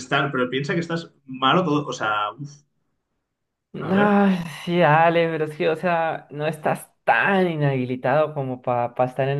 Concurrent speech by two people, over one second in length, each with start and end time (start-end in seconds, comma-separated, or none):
none